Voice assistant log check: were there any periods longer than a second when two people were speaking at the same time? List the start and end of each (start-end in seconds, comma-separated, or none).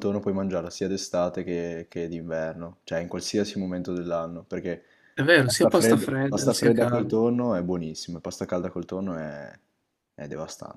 5.4-7.1